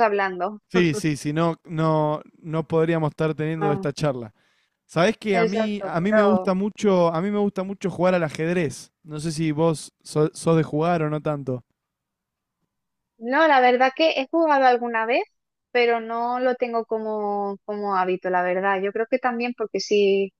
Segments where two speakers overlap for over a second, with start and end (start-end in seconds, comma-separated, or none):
5.3-6.5